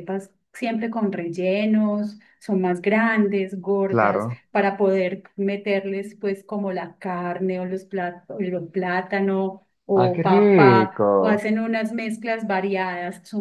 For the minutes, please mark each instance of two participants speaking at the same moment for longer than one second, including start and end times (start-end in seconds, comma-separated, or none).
9.9-11.4